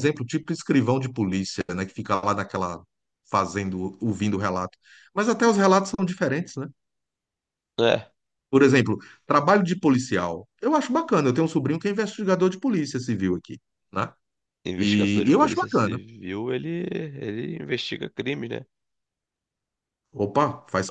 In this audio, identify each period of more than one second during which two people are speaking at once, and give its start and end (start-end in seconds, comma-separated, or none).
14.8-16.0